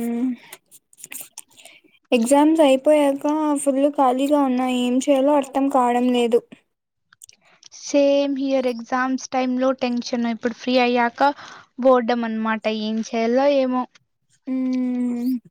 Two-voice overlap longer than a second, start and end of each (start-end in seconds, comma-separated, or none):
none